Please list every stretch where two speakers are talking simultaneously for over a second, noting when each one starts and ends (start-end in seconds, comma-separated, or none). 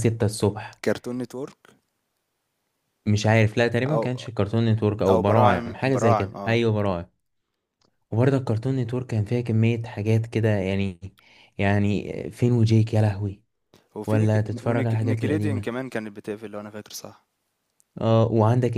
5.1-6.6, 14.1-15.7